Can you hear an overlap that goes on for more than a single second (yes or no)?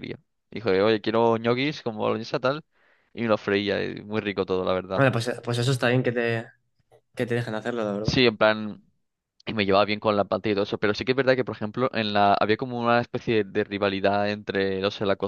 no